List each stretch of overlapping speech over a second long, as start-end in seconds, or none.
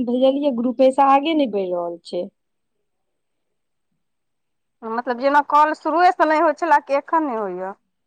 none